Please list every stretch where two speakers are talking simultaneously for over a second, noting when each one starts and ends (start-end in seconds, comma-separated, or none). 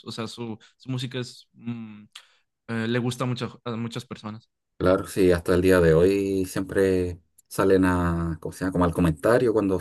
none